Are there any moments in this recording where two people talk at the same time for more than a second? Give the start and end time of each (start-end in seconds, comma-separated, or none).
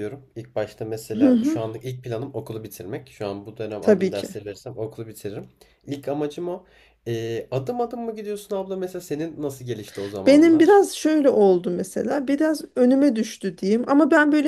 none